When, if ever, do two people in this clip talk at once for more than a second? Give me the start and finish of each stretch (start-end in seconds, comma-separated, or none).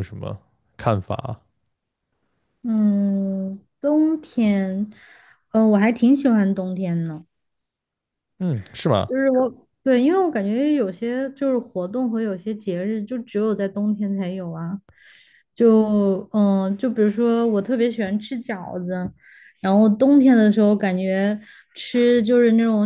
none